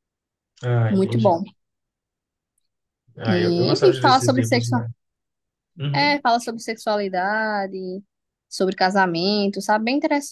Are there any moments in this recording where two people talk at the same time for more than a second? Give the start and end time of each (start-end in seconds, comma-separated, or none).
3.2-4.8